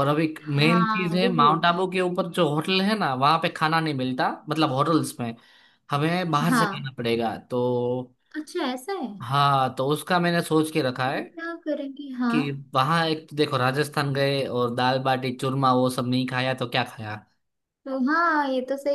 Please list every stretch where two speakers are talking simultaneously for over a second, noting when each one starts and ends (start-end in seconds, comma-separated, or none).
0.5-1.8